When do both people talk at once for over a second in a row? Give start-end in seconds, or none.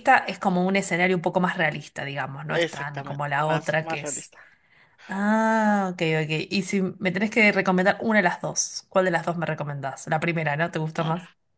2.5-4.3